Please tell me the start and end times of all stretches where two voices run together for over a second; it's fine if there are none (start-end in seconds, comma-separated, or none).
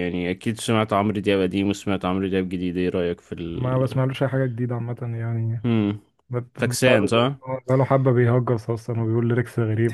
none